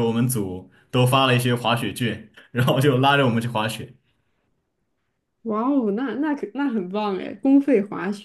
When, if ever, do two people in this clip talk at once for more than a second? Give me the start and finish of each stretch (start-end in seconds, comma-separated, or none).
none